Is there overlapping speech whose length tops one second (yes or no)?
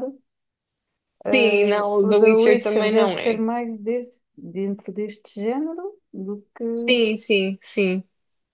yes